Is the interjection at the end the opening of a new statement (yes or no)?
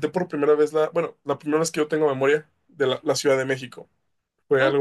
yes